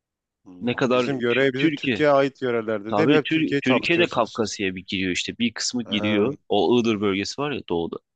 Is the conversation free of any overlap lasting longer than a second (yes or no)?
no